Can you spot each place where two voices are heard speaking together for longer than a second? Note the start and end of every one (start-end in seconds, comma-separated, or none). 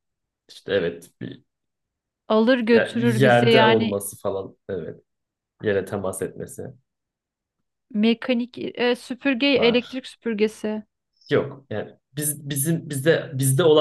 2.7-4.0